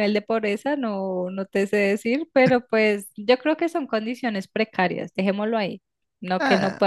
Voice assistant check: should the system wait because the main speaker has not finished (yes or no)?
yes